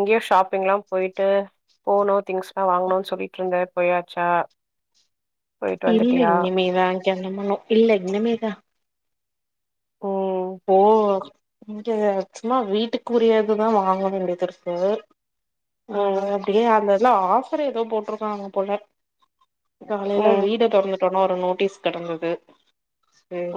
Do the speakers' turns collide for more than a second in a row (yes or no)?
no